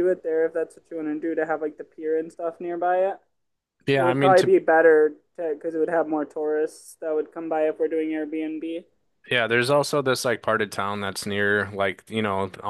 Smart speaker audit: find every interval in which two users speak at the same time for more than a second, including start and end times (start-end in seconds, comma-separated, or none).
none